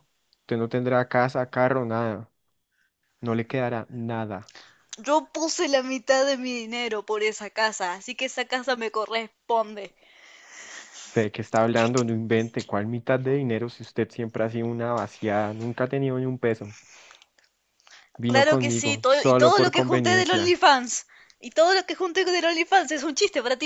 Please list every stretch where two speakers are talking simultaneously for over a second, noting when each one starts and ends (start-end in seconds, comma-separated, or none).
18.3-20.6